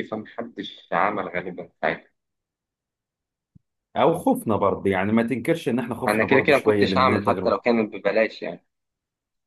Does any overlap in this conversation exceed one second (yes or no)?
yes